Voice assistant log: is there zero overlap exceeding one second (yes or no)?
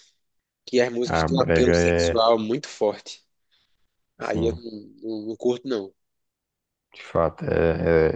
no